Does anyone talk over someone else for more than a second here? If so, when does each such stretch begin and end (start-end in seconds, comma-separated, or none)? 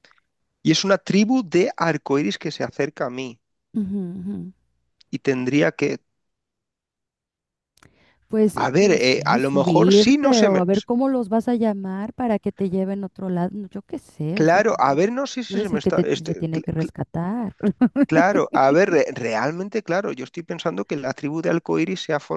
8.5-10.6, 15.5-16.9